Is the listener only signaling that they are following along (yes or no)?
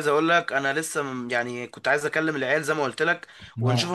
yes